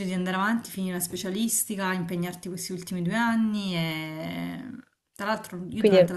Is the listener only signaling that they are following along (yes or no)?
yes